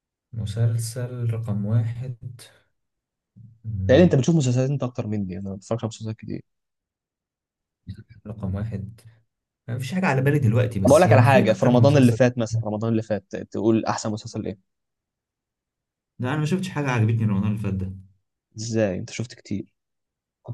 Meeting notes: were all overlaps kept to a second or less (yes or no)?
no